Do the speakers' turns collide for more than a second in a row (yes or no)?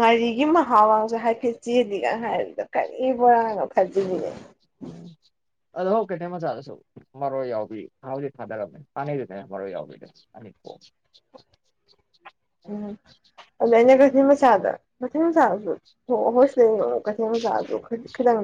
no